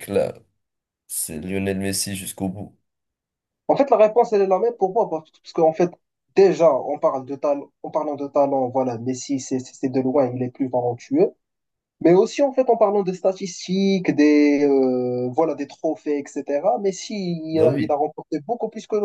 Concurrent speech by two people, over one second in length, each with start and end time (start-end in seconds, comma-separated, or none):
none